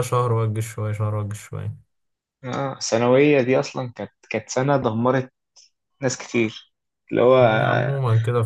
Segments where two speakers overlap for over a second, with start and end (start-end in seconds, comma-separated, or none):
none